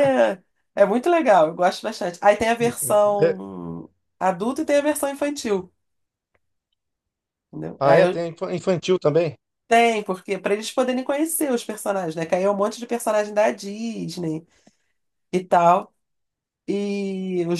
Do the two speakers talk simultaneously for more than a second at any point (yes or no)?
no